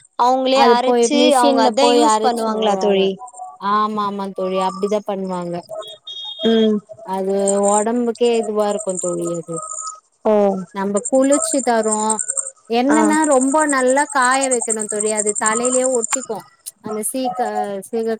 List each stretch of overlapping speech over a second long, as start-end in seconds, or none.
0.6-3.0